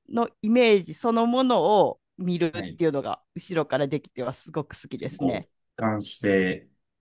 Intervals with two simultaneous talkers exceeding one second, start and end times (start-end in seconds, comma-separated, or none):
none